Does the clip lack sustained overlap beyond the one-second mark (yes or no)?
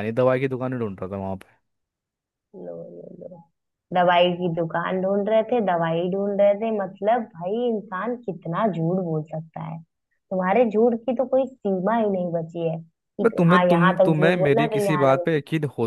no